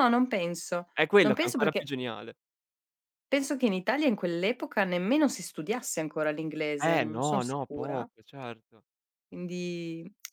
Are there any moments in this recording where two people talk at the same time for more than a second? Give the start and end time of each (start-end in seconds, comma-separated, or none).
6.8-8.1